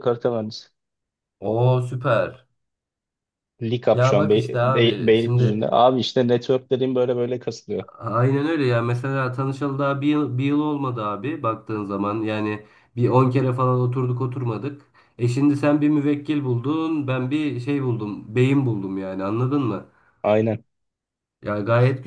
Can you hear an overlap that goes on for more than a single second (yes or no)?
yes